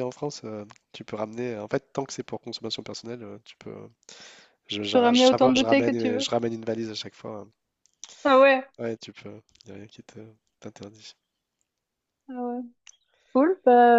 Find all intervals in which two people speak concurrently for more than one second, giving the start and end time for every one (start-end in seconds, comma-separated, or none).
4.8-6.3